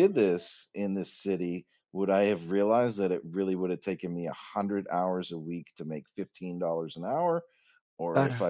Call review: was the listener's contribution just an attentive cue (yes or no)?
yes